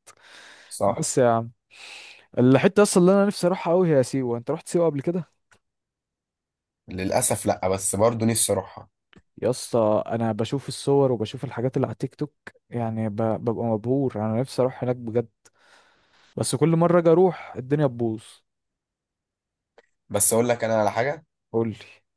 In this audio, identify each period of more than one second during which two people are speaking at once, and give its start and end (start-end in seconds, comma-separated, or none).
none